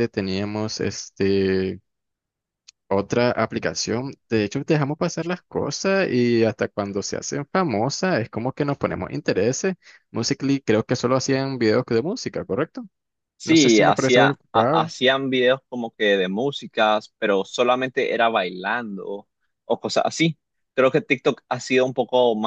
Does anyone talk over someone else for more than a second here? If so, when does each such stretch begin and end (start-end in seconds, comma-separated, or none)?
13.4-14.9